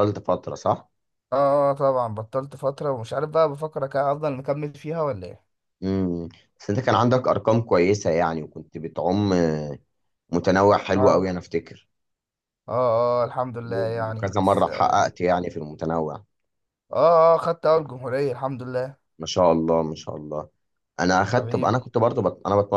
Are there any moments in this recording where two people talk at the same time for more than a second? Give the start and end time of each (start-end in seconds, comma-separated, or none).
13.7-15.0